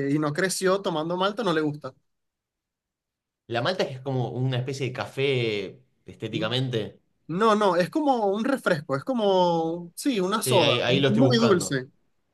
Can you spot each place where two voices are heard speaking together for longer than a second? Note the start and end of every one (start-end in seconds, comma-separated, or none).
10.3-11.8